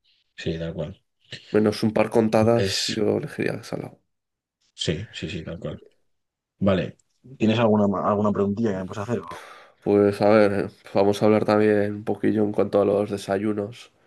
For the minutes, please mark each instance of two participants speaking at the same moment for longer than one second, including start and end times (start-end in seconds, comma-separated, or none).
none